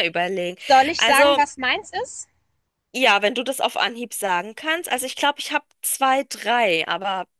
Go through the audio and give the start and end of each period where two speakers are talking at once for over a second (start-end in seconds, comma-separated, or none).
none